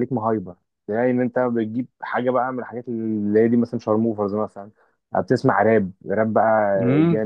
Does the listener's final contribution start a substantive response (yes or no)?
yes